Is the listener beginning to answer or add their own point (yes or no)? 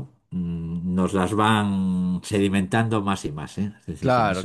yes